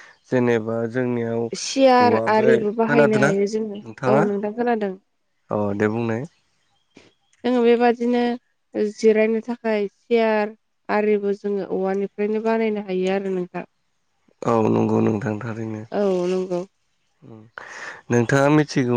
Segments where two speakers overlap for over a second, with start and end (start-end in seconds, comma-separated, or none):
1.6-3.3